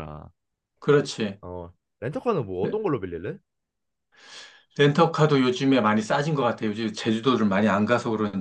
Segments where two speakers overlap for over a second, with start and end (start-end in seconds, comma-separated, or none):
none